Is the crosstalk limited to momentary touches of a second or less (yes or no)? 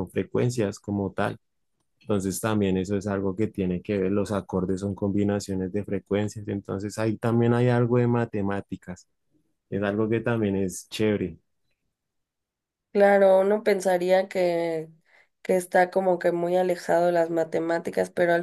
yes